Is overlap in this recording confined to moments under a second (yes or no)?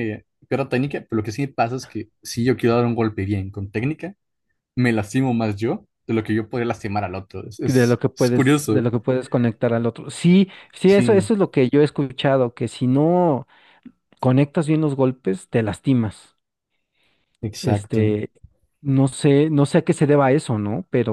no